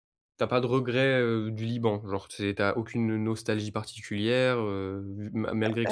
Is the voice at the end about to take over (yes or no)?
no